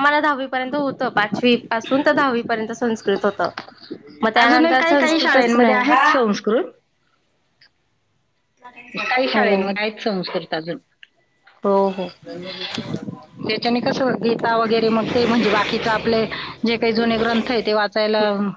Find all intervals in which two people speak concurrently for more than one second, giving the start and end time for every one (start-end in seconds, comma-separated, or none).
4.4-6.0